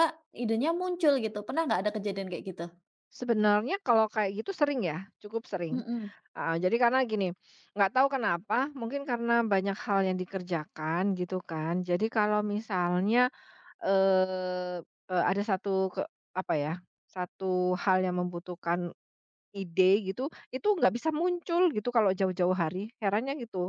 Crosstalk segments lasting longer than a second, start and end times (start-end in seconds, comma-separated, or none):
none